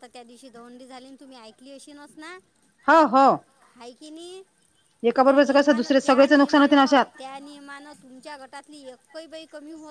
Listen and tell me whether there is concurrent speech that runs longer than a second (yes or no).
yes